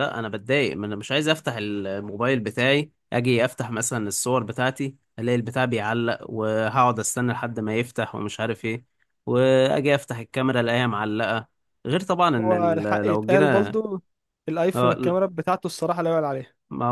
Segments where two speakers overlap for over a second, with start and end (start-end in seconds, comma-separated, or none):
12.4-13.8